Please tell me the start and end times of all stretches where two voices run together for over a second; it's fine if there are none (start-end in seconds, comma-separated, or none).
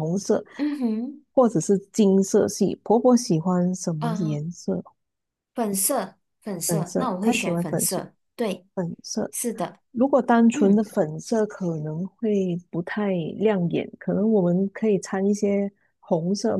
6.7-8.0